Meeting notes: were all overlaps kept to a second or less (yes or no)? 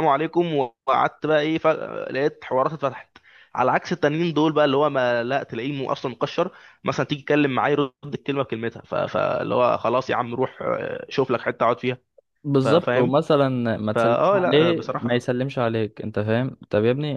no